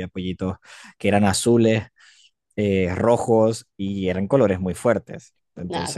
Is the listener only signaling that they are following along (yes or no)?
yes